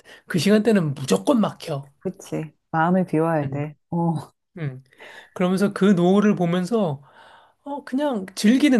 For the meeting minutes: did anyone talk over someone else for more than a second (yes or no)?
no